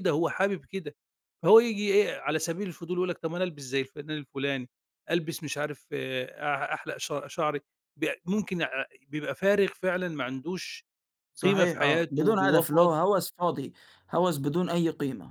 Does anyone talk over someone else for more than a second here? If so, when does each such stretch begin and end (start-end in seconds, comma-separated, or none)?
11.4-12.9